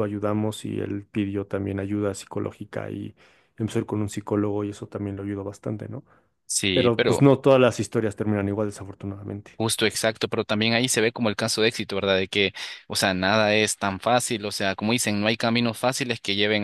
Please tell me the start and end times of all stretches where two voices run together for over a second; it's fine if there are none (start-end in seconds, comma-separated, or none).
none